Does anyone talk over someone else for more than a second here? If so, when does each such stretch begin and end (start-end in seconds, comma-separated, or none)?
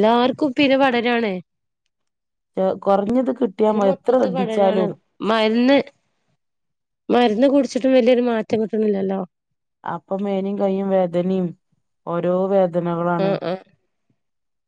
none